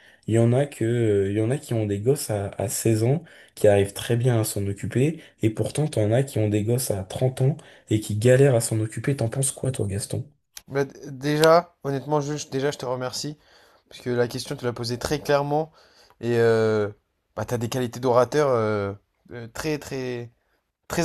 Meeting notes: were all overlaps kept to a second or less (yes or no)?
yes